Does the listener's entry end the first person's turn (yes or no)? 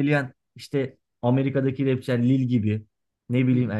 no